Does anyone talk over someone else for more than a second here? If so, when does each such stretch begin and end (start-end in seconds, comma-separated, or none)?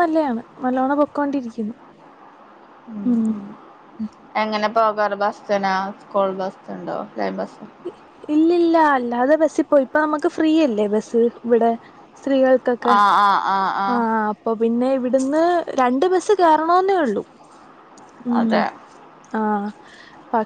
none